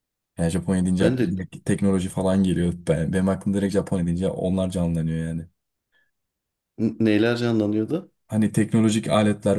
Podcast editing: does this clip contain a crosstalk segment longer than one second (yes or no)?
no